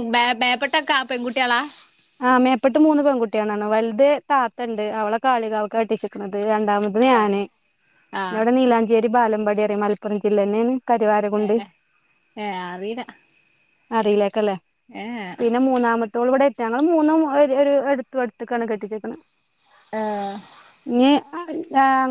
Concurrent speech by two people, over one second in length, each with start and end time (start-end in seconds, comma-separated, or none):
none